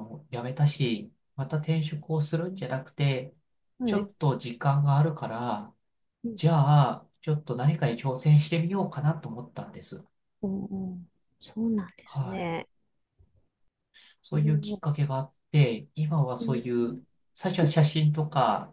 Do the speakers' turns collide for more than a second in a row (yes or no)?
no